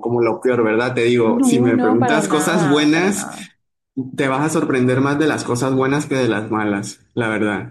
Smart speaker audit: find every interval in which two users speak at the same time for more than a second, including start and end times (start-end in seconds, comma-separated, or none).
1.2-3.3